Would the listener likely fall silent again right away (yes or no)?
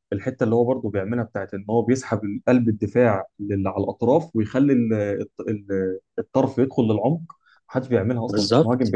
no